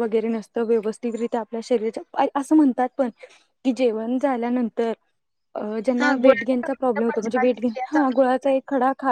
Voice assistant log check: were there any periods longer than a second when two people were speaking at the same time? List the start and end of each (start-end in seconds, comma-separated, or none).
6.0-8.6